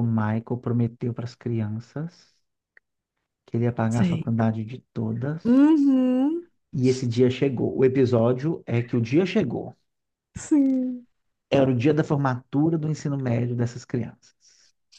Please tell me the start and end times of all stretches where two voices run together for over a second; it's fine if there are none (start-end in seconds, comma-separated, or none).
none